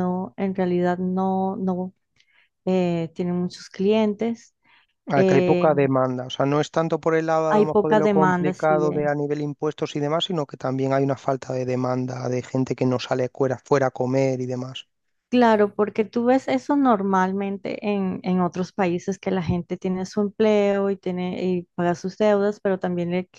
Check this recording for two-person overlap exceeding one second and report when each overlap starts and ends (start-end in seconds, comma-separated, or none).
7.5-9.1